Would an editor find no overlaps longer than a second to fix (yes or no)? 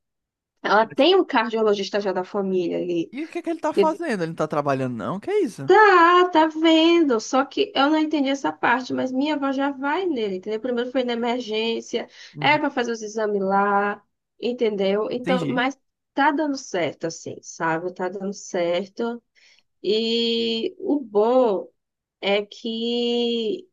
yes